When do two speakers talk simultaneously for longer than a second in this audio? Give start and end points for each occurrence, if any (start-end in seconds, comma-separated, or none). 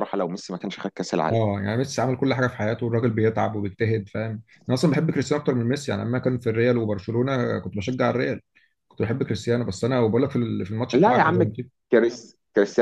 none